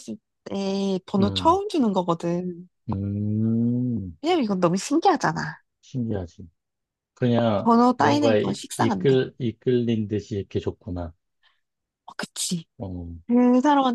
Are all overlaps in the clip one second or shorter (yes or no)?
no